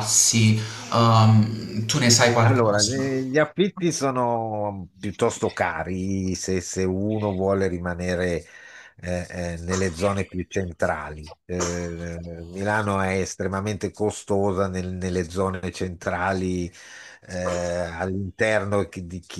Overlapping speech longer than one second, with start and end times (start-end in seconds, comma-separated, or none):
none